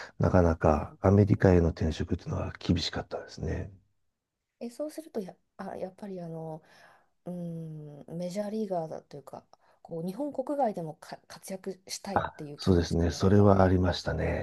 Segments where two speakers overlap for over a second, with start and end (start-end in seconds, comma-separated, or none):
12.1-13.9